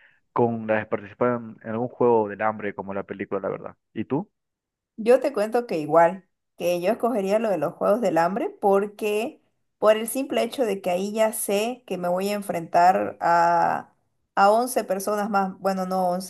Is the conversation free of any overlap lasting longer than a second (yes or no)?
yes